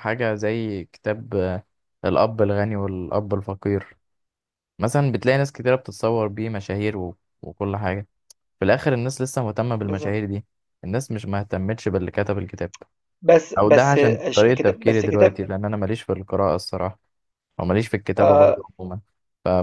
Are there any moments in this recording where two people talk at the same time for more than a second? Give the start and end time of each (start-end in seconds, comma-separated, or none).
13.6-15.4